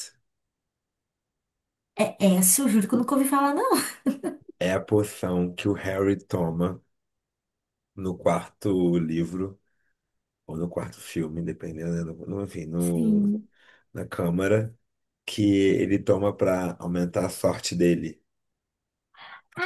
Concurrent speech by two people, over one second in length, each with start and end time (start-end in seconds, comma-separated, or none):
none